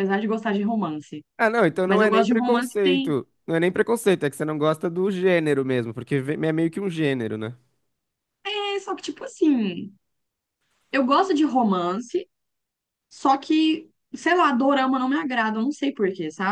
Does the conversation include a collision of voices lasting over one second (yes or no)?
yes